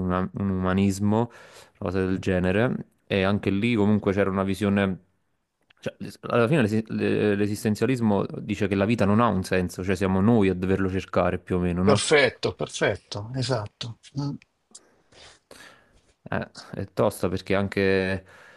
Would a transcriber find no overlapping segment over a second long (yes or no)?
yes